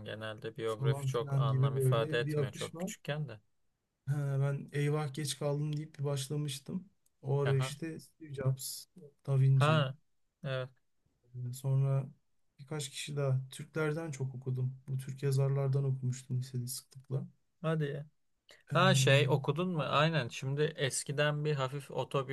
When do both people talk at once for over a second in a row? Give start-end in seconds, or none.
0.6-3.0